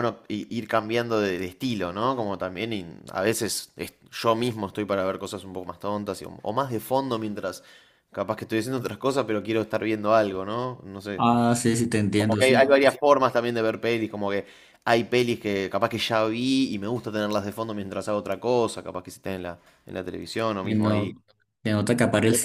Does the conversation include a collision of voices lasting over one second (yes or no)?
no